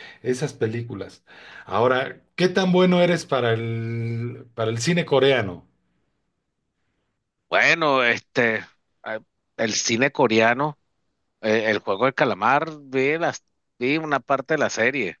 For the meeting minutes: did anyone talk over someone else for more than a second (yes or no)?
no